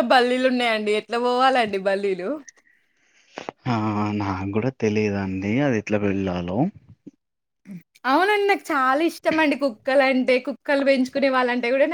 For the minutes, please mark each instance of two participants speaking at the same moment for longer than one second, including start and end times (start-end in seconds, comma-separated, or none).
none